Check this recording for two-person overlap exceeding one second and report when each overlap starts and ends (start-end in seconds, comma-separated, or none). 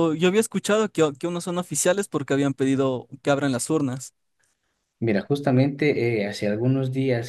none